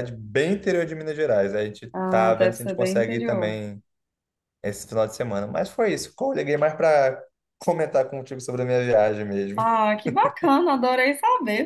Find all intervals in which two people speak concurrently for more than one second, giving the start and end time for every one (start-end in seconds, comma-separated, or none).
1.9-3.6